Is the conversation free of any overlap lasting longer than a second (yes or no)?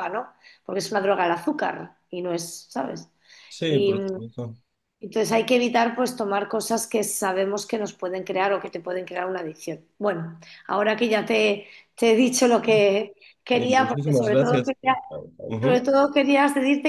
no